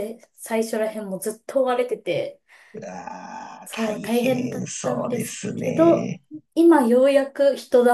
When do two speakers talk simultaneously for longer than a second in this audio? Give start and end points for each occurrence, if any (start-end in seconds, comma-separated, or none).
3.6-6.1